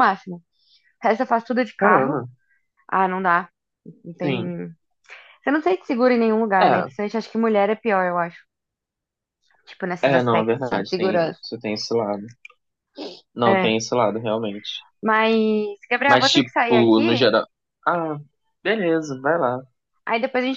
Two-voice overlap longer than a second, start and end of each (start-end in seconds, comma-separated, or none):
10.0-11.4, 16.1-17.3